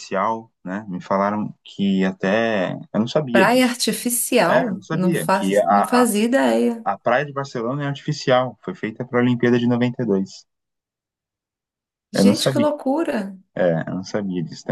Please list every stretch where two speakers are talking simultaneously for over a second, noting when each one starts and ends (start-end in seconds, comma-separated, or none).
4.5-6.1